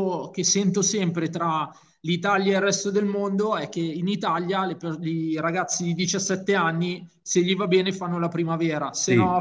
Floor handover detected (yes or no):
no